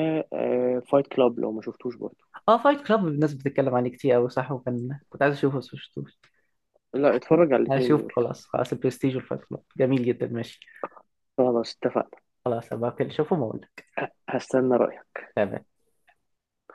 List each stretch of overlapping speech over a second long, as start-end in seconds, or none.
none